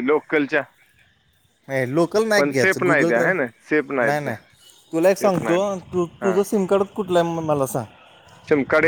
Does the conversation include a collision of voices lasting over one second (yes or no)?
yes